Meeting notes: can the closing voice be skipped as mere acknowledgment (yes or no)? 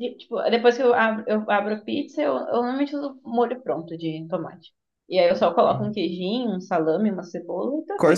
no